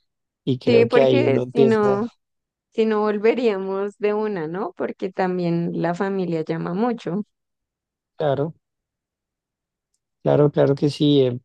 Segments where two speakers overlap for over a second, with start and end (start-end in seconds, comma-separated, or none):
0.7-2.1